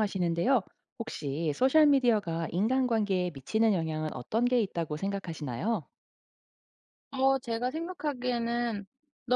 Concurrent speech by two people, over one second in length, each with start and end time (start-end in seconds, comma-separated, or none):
none